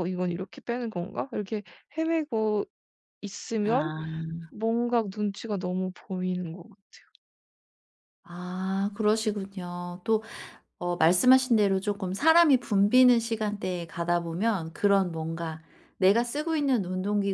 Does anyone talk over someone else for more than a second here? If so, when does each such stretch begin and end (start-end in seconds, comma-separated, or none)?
none